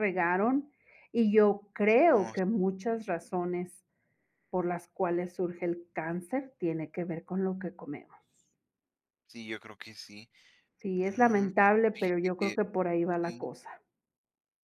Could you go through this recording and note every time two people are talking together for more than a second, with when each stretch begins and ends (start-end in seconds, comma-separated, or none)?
10.9-12.6